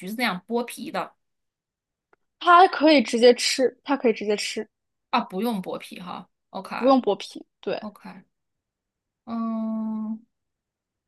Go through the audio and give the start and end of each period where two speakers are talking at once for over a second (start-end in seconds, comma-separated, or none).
none